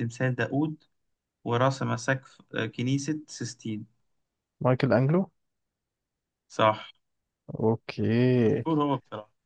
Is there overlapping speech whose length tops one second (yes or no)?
no